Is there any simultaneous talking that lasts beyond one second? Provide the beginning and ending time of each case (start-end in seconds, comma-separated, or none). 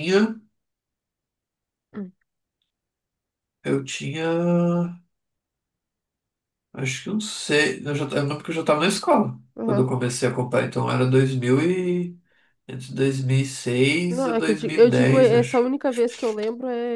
14.1-15.7